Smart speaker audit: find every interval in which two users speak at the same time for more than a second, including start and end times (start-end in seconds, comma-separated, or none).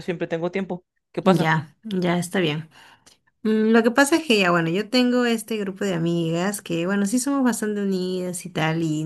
none